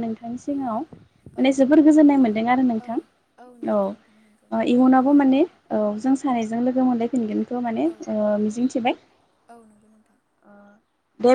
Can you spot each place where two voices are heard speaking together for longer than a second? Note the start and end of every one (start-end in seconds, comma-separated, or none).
3.7-5.6